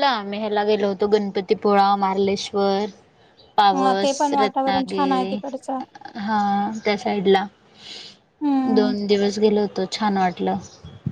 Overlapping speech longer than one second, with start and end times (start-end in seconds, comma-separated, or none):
3.8-5.4